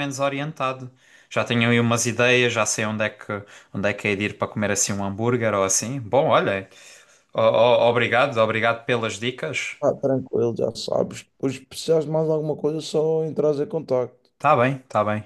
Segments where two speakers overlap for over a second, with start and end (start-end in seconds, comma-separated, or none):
none